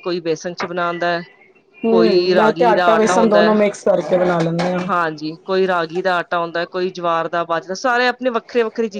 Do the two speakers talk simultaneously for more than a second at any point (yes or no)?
yes